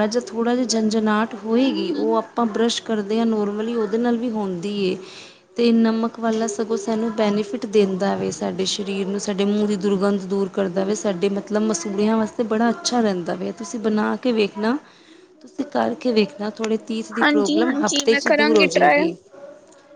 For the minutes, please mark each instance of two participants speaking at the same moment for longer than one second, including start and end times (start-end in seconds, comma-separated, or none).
17.2-19.0